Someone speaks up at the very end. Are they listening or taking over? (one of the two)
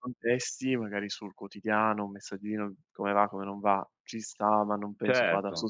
taking over